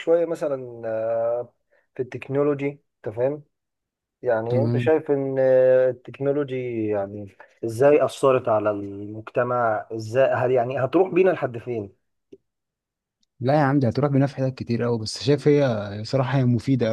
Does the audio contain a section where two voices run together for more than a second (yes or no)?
no